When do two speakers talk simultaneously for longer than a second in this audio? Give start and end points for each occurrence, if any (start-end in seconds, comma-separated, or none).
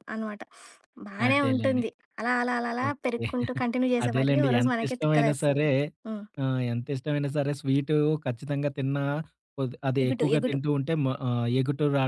4.0-5.6